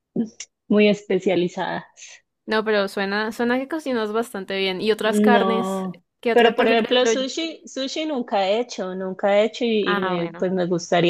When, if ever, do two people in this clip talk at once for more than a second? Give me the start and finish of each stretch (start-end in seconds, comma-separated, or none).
5.0-7.1